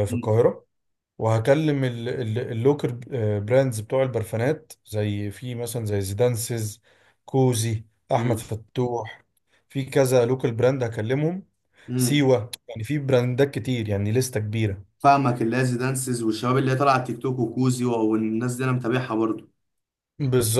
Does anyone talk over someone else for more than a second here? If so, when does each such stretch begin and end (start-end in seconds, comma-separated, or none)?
none